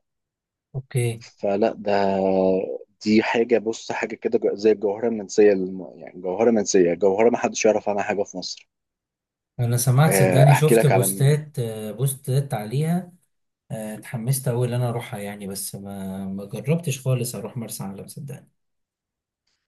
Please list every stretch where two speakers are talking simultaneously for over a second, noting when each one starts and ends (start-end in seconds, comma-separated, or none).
10.1-11.4